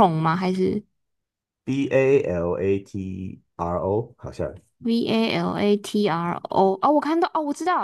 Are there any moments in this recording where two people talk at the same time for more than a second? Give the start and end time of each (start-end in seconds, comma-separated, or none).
none